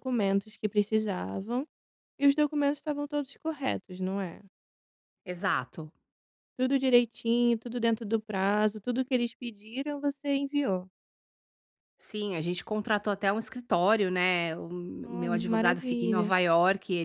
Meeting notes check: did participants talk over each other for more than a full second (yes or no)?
yes